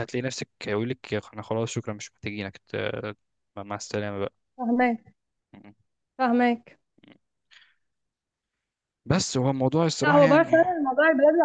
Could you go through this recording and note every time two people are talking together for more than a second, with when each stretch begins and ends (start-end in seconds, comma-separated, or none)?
none